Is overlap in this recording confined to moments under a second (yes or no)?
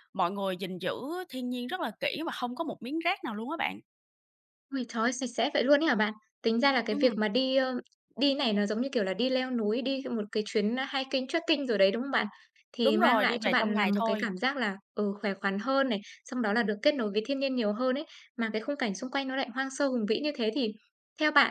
no